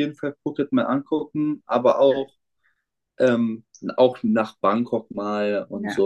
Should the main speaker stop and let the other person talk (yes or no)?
no